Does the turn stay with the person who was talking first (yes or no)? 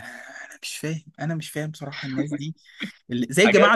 yes